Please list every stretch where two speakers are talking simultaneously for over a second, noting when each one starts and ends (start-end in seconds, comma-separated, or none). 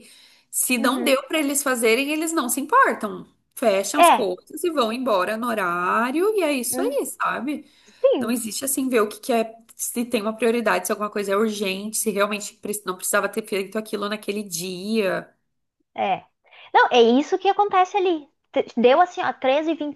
none